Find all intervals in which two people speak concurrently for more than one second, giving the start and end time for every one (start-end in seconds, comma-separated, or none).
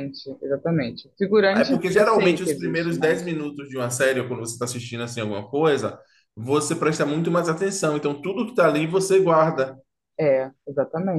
1.5-3.2